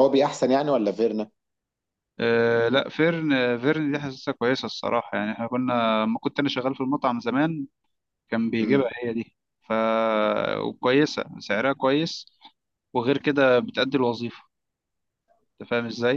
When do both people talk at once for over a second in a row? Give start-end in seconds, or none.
none